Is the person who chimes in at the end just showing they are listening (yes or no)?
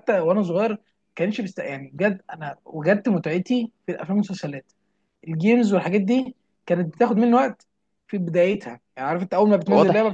yes